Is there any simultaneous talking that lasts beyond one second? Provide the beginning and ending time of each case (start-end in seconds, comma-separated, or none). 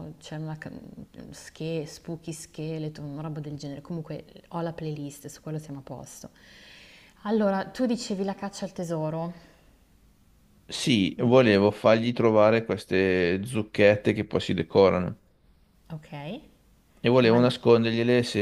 none